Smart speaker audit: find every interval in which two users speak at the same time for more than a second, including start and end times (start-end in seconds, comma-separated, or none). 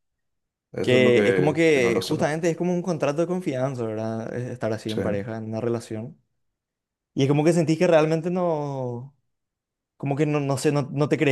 0.8-2.4